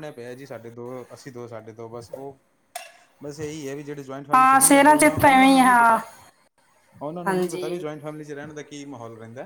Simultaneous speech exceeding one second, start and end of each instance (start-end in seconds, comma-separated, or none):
4.3-6.0